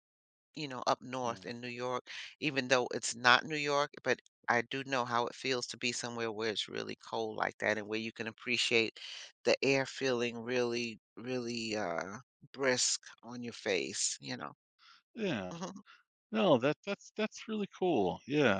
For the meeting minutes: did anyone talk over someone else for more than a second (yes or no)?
no